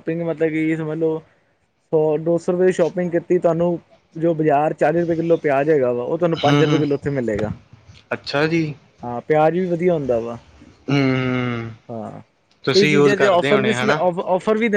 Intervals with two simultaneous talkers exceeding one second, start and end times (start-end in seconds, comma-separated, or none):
12.7-14.0